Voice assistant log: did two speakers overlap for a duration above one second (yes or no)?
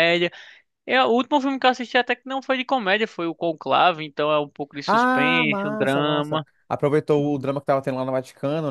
yes